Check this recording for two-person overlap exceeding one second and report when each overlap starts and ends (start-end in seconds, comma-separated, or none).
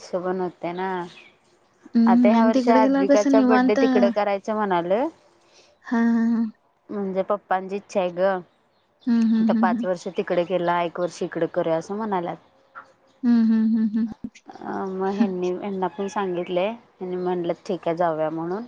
2.1-3.8